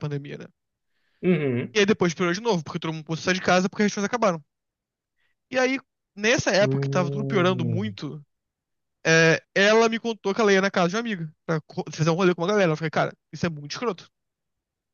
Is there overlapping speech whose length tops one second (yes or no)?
yes